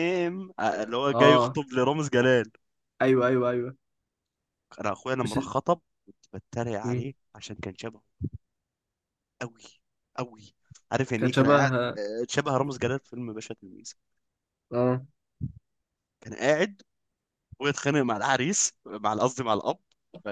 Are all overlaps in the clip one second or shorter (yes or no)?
yes